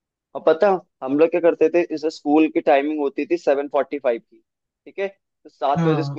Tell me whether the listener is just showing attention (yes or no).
yes